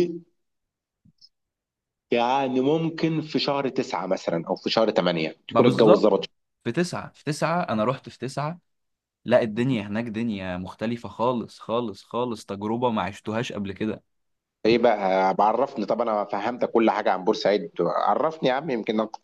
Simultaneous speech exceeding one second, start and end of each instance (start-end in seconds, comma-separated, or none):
none